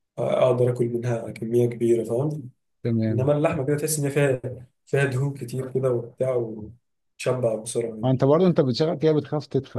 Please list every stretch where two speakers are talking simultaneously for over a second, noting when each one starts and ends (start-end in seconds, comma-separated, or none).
none